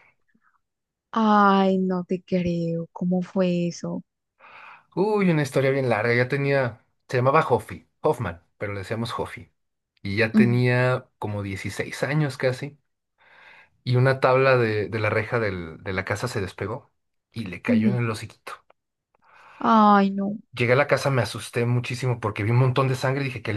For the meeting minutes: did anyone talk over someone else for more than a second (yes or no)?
no